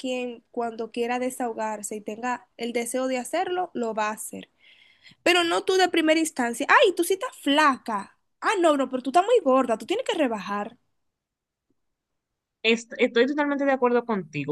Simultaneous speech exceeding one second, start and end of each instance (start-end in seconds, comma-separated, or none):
none